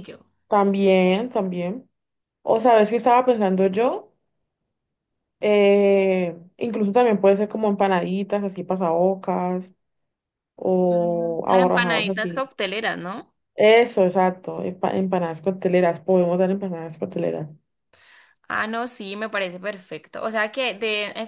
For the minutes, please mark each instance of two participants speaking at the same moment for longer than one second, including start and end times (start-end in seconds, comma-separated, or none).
10.9-12.4